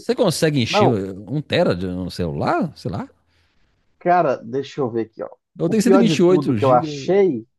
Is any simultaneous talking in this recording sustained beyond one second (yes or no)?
yes